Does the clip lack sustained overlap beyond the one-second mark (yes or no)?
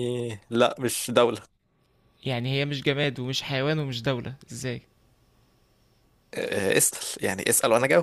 yes